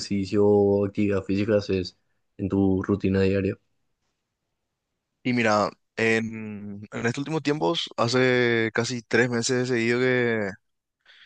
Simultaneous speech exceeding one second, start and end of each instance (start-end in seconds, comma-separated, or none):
none